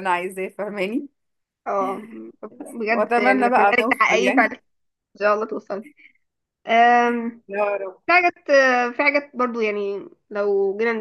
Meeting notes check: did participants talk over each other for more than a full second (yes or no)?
yes